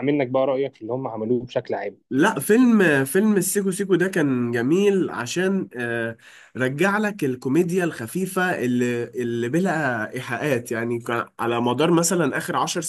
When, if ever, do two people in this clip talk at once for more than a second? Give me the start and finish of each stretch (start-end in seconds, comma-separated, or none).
none